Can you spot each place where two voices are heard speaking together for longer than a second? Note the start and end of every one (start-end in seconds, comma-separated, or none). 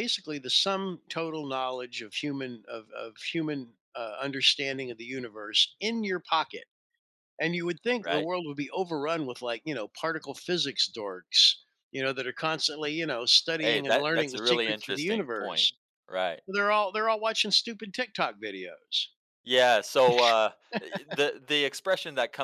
13.6-15.7